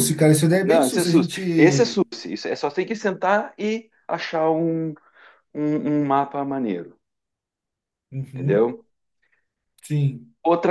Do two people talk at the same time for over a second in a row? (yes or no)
yes